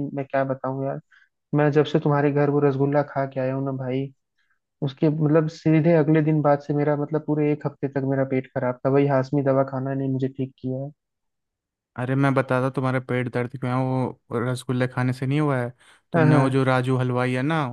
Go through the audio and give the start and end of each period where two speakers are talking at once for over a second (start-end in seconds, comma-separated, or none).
none